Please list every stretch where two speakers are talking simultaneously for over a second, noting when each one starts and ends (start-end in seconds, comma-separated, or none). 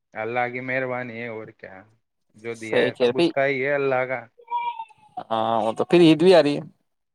none